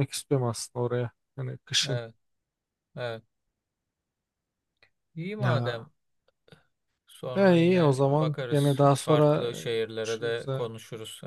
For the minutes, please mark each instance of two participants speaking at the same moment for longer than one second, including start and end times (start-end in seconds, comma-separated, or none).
7.3-10.7